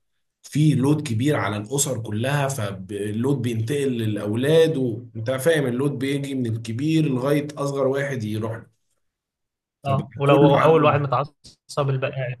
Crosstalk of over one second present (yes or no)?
yes